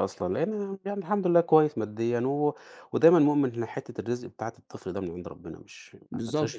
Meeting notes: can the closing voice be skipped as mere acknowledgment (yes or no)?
no